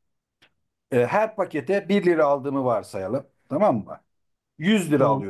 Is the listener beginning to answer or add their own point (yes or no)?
no